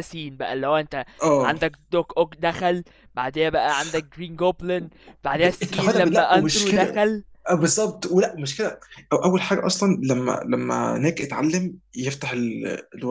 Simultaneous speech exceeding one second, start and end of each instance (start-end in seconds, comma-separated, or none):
5.4-7.0